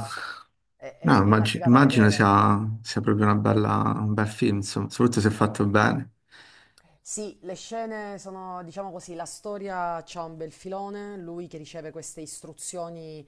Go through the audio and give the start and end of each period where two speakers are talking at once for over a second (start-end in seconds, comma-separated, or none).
1.0-2.3